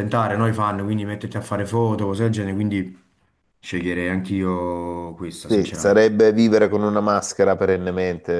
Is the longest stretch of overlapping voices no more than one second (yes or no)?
yes